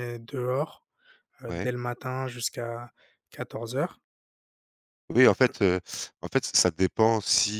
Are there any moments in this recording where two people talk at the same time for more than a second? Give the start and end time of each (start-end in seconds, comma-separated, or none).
none